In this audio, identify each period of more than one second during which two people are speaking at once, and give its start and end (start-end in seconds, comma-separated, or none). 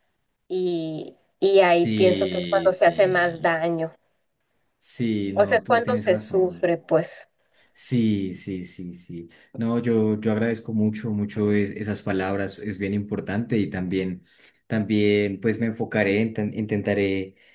1.8-3.6, 5.3-6.7